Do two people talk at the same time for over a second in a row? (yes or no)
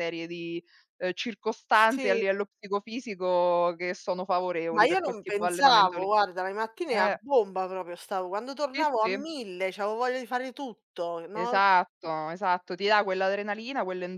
yes